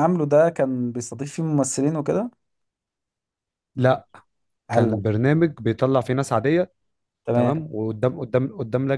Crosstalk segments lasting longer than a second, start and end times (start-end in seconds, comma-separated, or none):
none